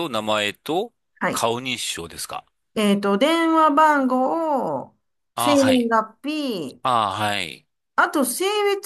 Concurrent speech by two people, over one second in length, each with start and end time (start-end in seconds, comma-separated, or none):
none